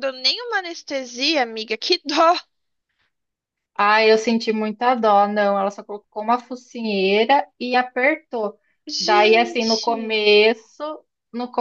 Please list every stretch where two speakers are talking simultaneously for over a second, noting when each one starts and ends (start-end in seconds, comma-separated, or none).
9.0-10.3